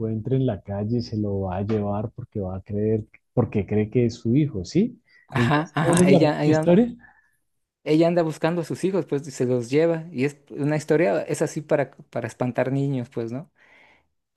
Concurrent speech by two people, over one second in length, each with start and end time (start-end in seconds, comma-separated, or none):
5.3-6.8